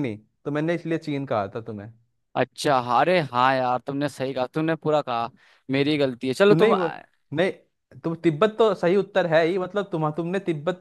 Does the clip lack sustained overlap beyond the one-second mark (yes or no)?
yes